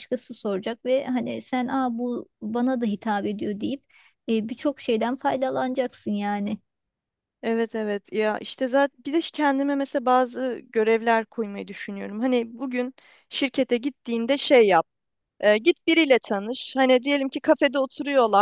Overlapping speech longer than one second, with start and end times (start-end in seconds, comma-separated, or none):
none